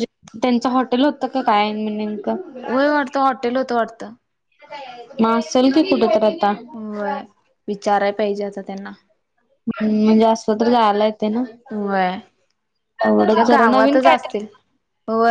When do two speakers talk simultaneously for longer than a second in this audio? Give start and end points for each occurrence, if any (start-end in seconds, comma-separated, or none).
13.2-14.5